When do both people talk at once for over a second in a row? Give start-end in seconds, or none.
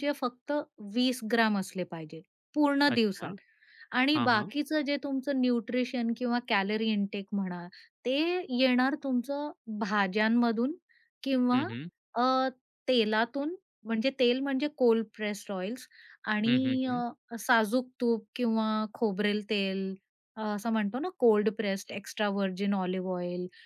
none